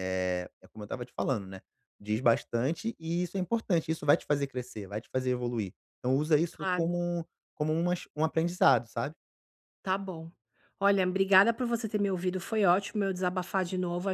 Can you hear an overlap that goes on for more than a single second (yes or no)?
no